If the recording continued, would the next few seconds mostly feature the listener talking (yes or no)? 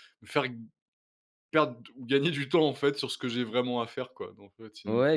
yes